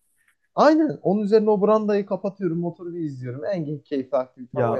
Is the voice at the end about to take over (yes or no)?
yes